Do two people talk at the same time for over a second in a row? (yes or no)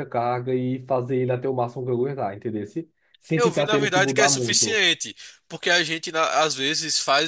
yes